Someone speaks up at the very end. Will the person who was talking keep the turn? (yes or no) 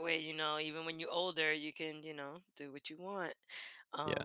no